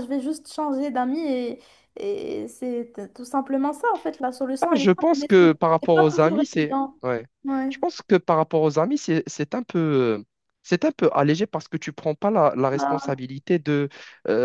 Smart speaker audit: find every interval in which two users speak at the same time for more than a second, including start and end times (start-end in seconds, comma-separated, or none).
4.6-7.0